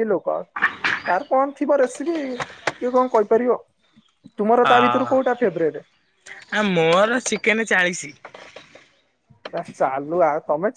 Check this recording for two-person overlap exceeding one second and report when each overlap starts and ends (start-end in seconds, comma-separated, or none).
none